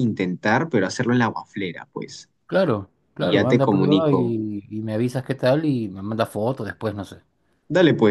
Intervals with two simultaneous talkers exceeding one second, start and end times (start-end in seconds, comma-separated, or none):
3.2-4.4